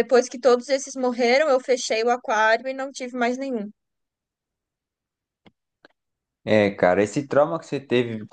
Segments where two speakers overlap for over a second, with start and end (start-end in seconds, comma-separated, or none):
none